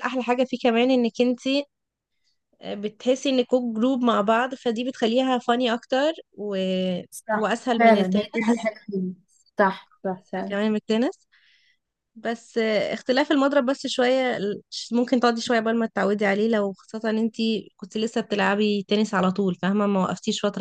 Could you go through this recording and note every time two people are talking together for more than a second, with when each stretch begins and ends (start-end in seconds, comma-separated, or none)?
7.1-8.7